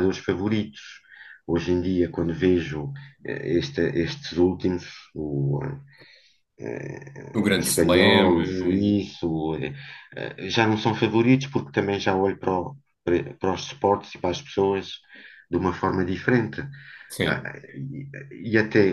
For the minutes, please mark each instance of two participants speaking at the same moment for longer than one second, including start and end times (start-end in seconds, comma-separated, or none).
7.5-9.0